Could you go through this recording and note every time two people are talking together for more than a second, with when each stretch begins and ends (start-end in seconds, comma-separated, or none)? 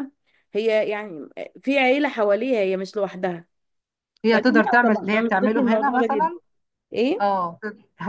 4.3-6.3